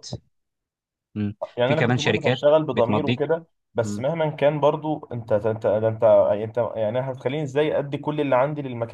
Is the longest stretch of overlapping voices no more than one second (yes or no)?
no